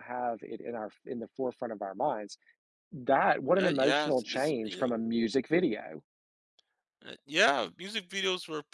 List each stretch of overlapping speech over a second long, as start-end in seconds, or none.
3.6-4.9